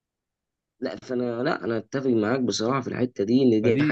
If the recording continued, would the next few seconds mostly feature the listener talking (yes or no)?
yes